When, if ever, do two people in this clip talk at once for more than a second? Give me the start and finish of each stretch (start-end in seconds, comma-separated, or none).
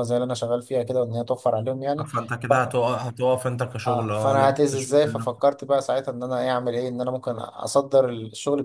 3.8-5.4